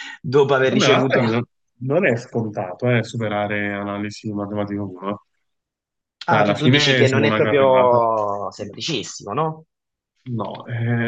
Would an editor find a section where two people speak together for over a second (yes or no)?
yes